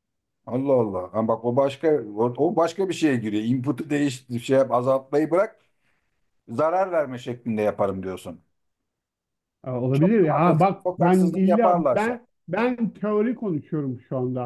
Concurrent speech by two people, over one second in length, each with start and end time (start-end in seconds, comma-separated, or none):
9.9-12.2